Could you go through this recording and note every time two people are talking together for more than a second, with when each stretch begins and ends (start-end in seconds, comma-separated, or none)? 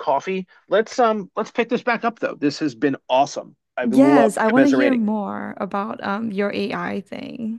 3.8-5.0